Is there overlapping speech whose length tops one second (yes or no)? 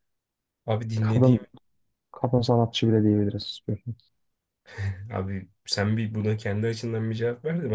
no